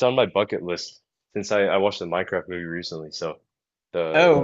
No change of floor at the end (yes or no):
no